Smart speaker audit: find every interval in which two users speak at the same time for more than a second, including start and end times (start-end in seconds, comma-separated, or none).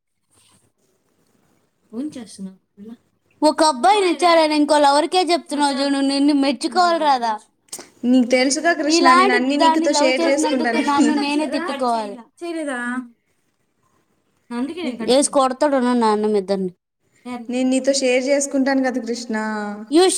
8.9-11.1